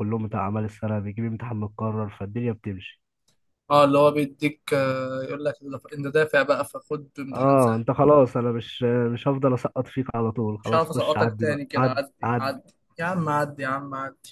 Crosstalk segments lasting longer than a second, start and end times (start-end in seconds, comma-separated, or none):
10.6-12.5